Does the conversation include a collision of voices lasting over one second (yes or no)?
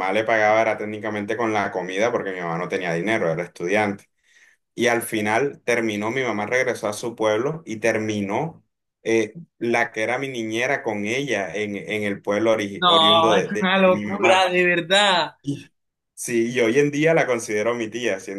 yes